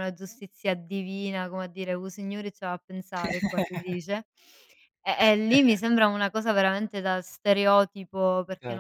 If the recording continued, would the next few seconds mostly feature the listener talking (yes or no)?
no